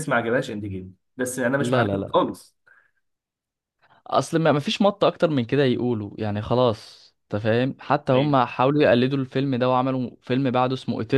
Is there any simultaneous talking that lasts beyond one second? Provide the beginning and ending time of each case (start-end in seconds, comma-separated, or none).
none